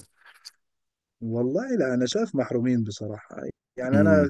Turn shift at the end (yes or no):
no